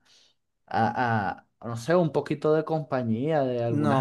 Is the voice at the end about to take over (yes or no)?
yes